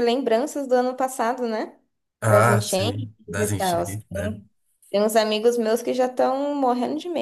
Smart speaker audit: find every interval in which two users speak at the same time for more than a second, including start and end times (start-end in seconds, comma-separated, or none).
2.2-4.4